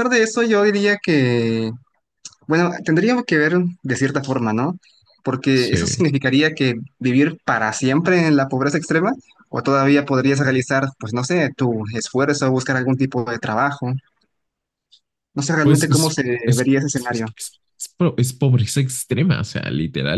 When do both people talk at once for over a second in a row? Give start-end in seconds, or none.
15.6-17.3